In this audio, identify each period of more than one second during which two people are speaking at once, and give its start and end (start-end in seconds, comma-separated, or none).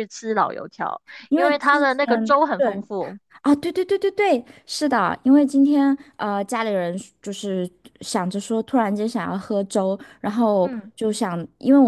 1.3-2.8